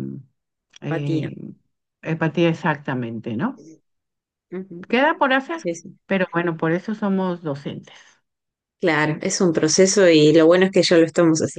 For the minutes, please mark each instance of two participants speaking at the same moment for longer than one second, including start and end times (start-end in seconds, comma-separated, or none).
none